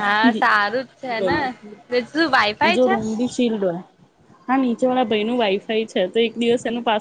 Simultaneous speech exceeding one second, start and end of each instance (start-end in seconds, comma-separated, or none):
none